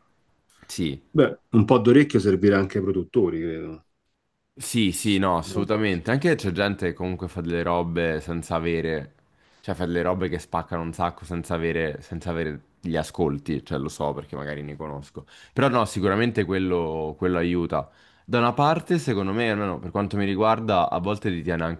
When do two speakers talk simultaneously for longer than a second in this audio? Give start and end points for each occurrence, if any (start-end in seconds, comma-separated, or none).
none